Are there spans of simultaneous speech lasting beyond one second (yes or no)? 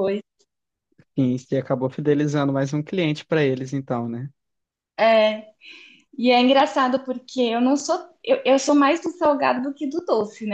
no